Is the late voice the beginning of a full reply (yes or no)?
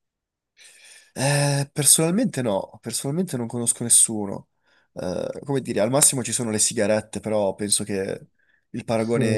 yes